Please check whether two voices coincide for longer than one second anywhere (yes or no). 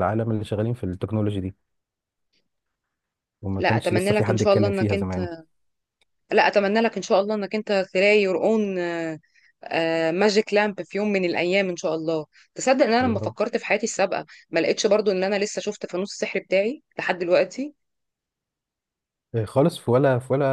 yes